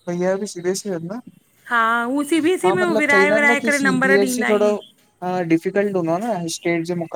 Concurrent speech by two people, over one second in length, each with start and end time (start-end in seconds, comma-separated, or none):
2.4-4.7